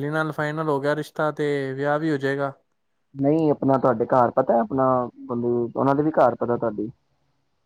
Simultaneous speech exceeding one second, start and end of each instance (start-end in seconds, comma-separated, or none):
none